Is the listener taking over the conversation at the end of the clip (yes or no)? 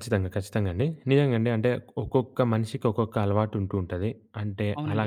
no